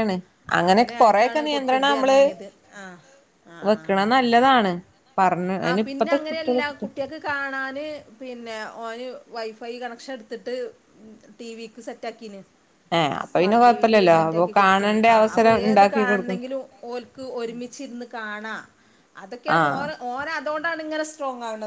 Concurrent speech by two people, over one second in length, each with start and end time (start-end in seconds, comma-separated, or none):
0.7-2.2, 13.3-16.4